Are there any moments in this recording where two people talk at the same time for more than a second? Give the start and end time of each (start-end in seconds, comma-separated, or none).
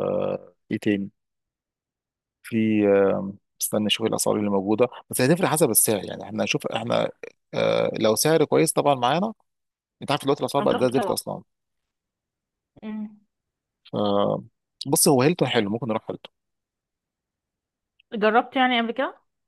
none